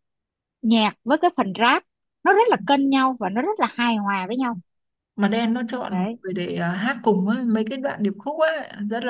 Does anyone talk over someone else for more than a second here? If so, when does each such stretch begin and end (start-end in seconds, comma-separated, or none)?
none